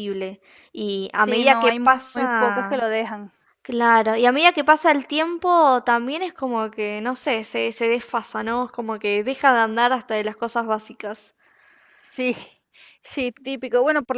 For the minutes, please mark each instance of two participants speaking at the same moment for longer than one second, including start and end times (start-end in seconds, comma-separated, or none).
1.1-2.9